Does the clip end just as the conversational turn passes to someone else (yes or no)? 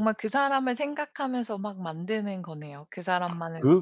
yes